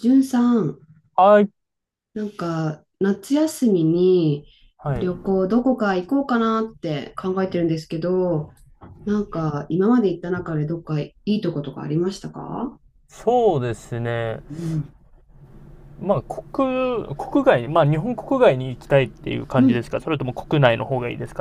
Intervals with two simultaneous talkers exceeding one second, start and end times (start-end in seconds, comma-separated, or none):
none